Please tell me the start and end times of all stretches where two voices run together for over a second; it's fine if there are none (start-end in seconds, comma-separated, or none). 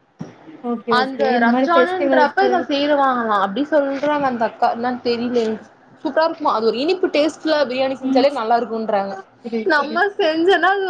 1.0-2.5